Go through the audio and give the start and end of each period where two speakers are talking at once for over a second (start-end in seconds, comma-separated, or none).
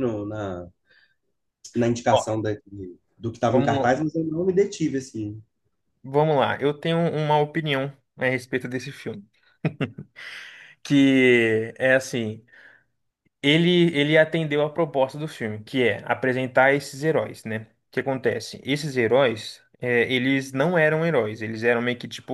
none